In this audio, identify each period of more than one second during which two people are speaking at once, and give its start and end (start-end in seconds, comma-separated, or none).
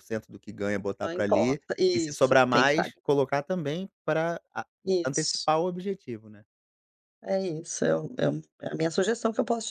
1.0-3.0